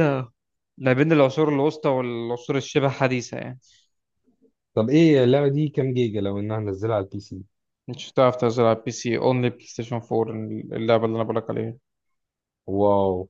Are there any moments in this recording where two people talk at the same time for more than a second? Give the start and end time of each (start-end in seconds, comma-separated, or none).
none